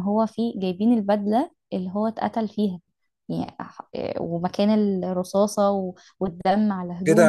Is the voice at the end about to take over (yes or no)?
yes